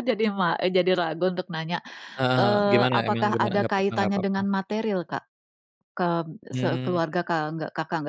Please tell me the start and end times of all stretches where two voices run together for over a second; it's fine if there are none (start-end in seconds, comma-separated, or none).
2.4-4.5